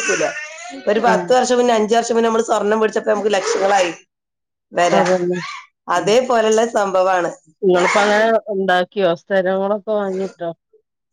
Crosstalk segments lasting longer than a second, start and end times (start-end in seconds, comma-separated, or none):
none